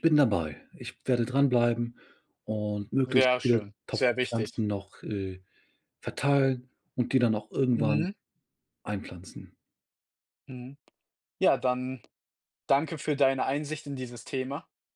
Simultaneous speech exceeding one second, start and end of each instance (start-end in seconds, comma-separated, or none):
3.0-4.6